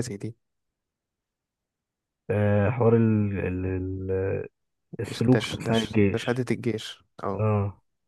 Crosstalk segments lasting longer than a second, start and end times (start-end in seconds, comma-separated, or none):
5.1-6.4